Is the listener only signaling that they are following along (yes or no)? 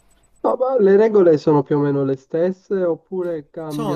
no